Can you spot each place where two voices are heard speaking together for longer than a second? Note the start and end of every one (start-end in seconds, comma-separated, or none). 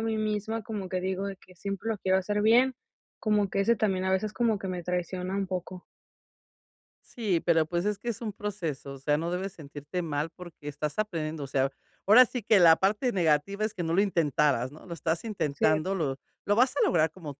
none